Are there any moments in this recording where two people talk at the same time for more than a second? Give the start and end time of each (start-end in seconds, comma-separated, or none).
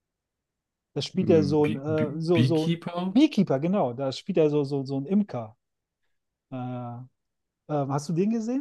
1.2-3.1